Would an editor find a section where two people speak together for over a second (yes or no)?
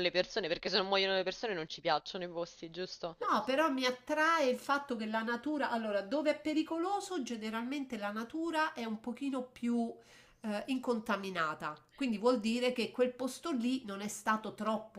no